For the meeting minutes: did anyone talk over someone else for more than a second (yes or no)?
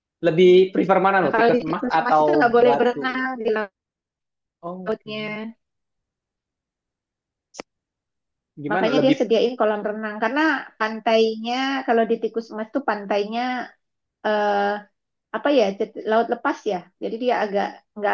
yes